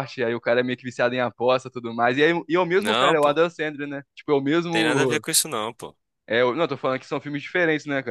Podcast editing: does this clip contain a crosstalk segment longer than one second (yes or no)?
no